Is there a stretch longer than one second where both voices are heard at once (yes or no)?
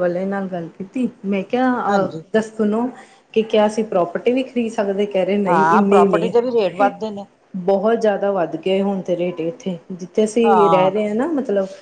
yes